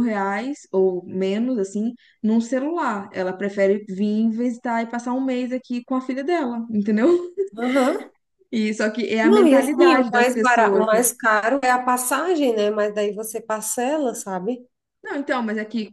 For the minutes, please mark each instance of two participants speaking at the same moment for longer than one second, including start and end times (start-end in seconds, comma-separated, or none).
9.2-11.0